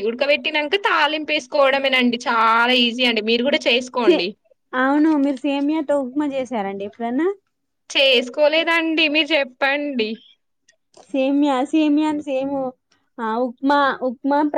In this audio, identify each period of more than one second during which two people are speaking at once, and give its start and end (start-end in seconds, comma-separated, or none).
none